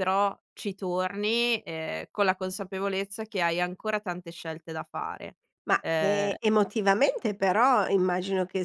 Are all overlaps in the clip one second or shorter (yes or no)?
yes